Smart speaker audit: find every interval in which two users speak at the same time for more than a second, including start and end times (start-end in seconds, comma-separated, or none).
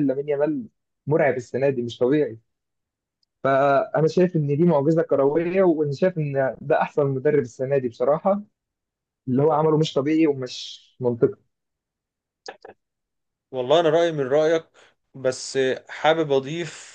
none